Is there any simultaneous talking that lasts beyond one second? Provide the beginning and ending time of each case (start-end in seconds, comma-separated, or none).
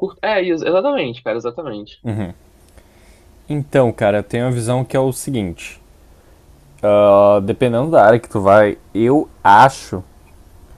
none